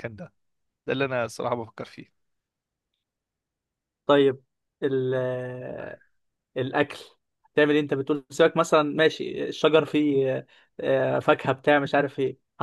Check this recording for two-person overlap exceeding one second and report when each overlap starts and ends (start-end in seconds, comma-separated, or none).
none